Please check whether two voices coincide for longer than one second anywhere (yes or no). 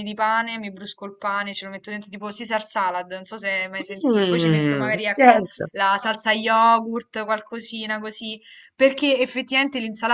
yes